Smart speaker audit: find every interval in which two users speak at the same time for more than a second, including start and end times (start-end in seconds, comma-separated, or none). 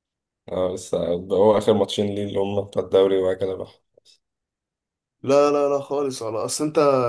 none